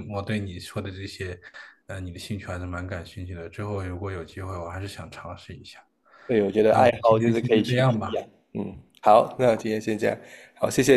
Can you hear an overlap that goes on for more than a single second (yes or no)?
yes